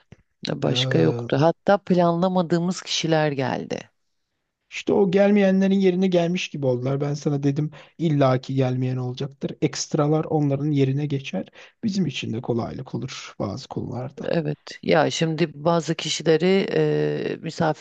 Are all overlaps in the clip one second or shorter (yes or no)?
yes